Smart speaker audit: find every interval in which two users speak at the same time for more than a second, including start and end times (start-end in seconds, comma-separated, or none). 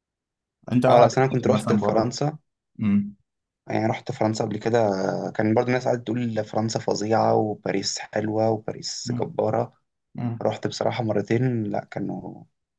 0.9-2.1